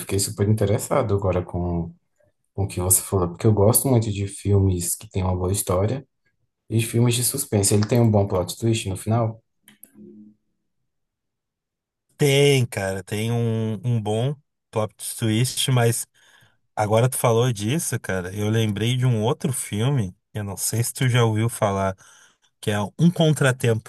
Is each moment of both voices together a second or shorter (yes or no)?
yes